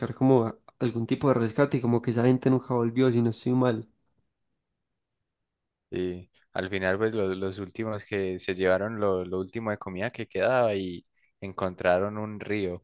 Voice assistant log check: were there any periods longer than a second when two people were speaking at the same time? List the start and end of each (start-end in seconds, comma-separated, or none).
none